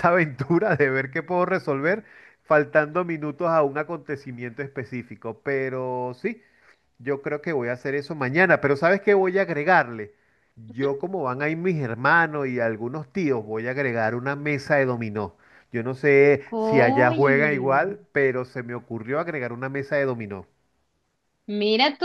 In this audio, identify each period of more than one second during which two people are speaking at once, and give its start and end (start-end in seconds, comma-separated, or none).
16.5-17.9